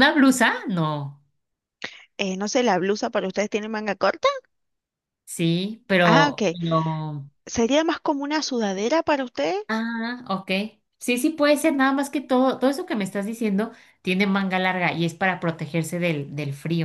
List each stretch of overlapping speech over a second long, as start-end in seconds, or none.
none